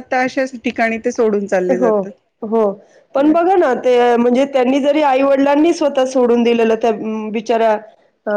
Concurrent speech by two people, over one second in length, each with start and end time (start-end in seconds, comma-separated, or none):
none